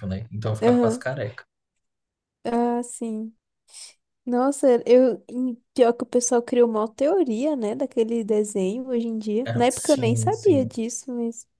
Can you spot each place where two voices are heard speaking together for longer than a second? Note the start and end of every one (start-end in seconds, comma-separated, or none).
9.5-10.7